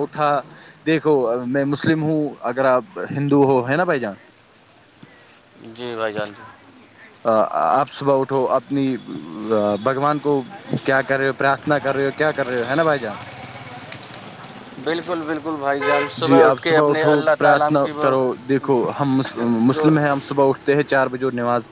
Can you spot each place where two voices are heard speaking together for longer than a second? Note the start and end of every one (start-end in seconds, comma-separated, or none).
16.5-18.1